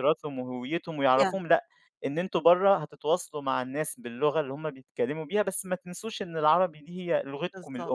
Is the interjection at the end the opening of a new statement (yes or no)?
yes